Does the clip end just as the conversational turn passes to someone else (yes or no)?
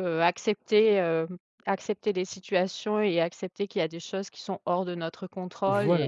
yes